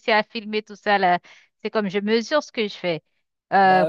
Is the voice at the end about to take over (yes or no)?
no